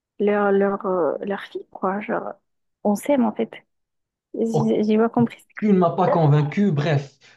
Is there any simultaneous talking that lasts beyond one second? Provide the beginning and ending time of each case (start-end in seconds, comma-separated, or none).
none